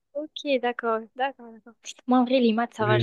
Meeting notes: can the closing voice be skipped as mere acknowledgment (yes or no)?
no